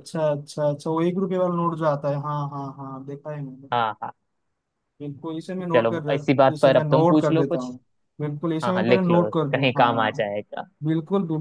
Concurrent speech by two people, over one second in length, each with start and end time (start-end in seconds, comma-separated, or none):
5.7-7.7, 8.6-10.2